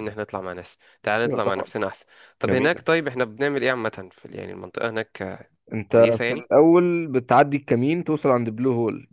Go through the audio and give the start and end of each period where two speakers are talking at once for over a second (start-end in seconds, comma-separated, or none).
none